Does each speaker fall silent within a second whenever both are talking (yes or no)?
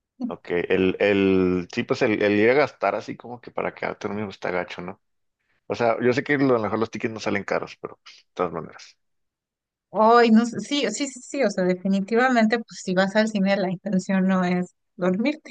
yes